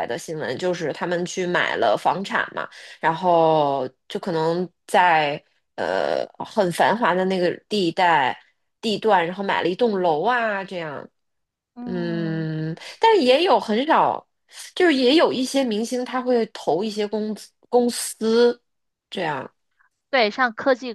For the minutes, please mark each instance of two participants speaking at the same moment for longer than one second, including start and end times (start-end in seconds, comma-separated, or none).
none